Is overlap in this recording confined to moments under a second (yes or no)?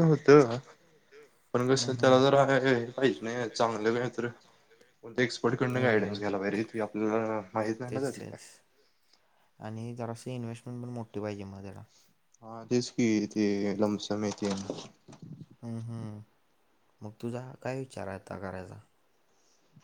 yes